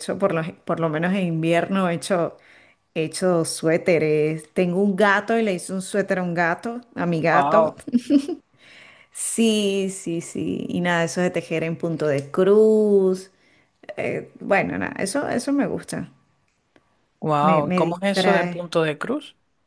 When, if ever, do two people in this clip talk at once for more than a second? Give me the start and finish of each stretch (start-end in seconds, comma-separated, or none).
17.4-18.6